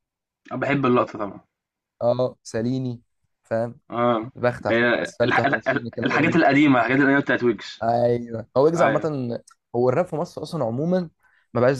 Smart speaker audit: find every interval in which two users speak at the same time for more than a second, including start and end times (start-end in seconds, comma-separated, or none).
4.7-6.4